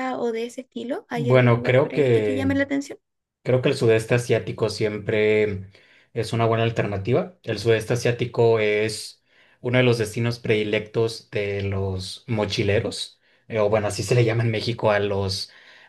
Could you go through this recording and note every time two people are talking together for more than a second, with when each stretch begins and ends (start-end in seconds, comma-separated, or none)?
1.1-2.5